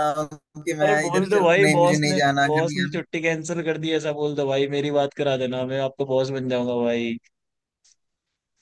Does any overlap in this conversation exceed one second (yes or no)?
yes